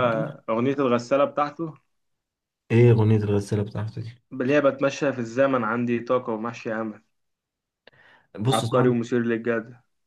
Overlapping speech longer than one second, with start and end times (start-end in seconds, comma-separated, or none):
none